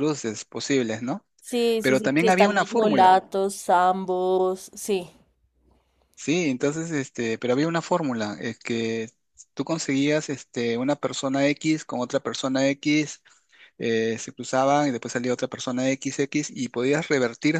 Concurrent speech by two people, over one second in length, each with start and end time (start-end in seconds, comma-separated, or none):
1.8-3.2